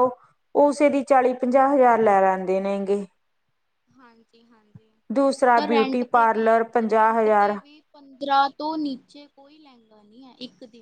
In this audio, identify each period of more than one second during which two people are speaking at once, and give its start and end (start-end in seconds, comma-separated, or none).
5.4-7.5